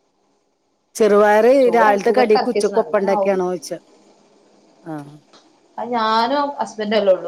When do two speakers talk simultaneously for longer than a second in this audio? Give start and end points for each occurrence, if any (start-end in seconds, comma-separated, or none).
1.6-3.4